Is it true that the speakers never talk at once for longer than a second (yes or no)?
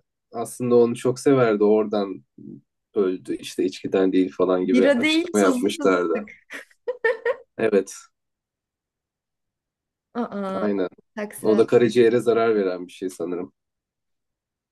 no